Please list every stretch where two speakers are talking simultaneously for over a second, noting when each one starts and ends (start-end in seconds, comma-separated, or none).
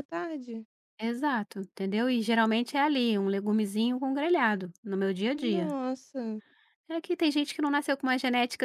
none